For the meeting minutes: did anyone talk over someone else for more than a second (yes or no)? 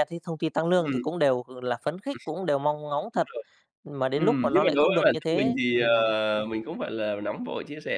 yes